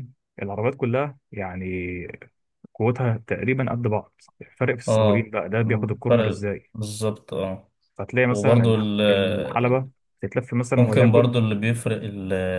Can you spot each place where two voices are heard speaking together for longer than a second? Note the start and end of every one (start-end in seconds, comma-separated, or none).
4.9-6.7, 8.3-9.8